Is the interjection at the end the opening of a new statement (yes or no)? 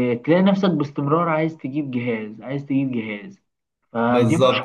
yes